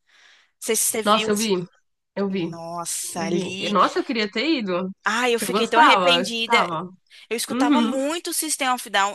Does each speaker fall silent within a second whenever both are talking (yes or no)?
no